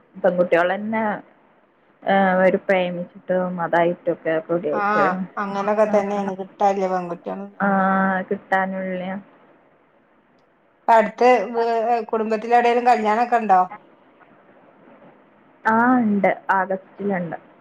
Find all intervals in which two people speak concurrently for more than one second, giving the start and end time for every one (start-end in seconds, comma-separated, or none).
none